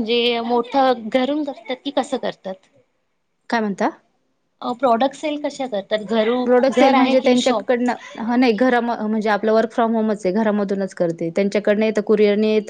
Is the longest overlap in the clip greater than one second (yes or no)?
yes